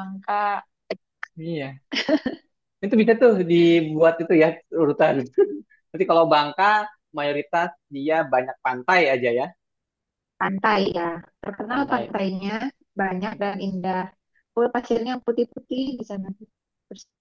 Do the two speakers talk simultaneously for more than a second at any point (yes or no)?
no